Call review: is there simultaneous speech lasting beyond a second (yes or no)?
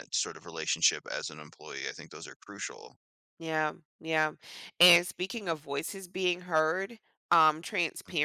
no